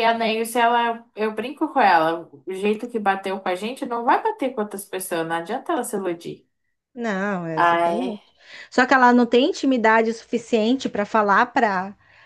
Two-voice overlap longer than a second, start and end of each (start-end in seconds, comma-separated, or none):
none